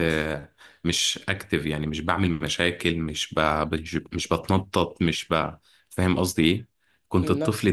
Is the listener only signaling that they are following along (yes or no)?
yes